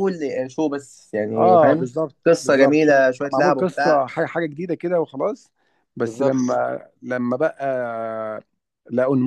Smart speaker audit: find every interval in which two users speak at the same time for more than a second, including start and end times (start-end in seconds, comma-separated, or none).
1.3-4.1